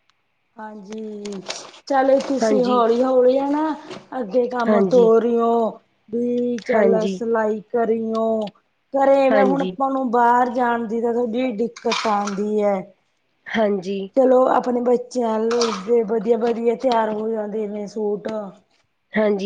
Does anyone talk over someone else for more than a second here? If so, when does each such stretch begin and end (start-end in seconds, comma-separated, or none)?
none